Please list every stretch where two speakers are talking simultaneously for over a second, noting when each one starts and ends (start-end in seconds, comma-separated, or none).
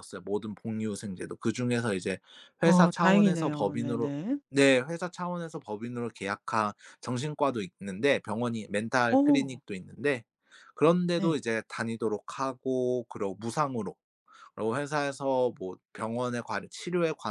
2.6-4.1